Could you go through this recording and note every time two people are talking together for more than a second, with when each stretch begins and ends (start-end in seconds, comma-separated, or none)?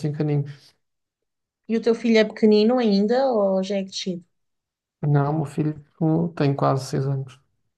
none